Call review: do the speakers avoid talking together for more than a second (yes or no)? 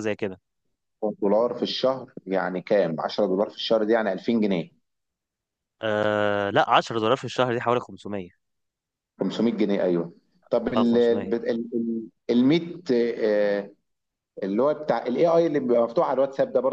yes